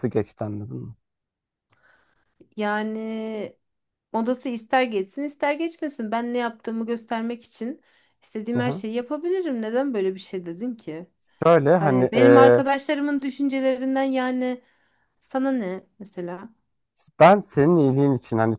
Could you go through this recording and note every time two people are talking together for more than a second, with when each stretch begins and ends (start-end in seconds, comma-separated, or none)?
none